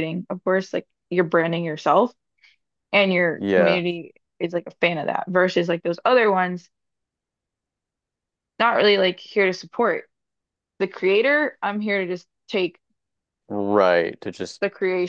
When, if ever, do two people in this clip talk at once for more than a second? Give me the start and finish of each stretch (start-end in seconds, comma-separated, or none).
none